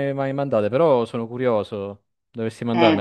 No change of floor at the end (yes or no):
no